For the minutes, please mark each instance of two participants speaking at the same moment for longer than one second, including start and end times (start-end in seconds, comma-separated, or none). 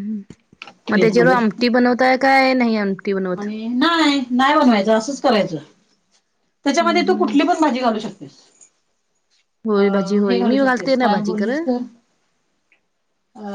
9.8-11.6